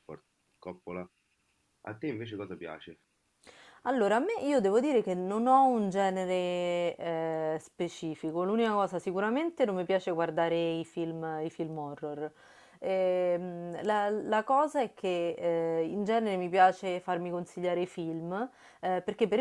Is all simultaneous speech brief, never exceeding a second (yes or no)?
yes